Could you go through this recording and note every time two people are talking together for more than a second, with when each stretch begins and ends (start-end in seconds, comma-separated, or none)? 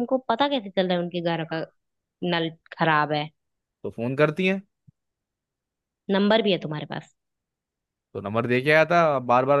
none